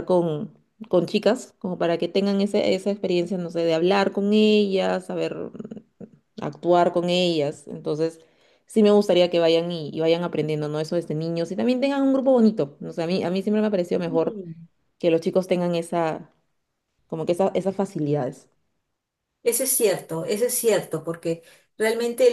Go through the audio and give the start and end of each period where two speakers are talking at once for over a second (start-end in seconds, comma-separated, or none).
none